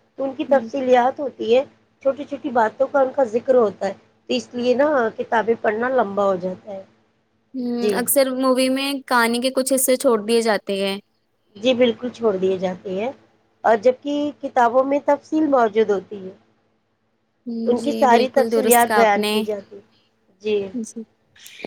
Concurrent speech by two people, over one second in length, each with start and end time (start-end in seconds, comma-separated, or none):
17.7-19.4